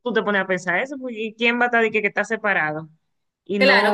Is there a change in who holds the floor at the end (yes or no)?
yes